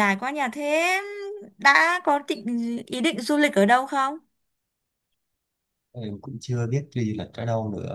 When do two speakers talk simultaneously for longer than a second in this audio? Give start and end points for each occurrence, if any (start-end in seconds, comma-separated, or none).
none